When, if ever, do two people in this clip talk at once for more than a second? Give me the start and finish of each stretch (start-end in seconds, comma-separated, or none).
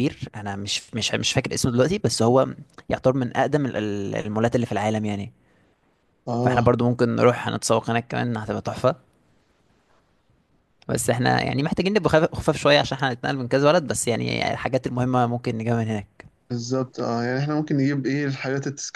none